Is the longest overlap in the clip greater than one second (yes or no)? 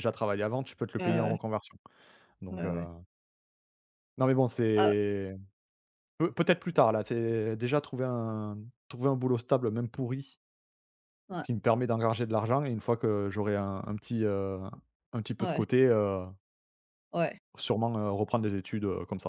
no